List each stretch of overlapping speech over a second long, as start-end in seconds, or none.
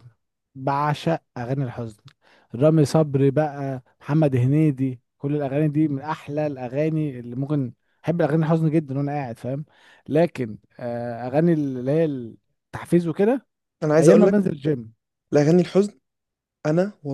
none